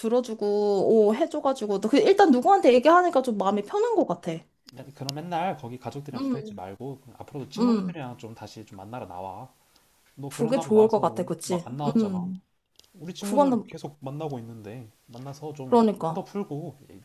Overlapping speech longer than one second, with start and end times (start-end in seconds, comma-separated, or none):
10.3-12.3